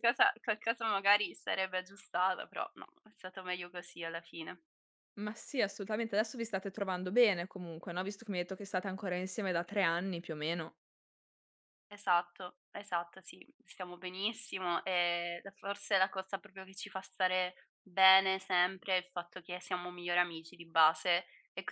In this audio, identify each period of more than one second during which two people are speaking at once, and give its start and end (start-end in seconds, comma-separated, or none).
none